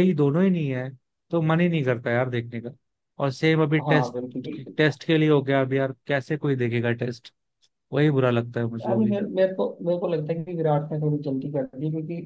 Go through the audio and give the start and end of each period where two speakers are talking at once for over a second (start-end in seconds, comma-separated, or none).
none